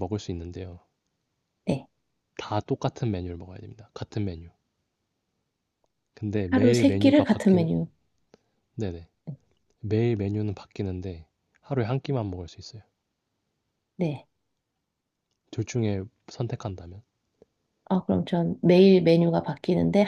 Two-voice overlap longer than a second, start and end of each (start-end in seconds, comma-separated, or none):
6.5-7.7